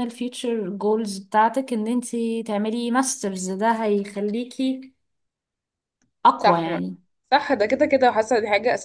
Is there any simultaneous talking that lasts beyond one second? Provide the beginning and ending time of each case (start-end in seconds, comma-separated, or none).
none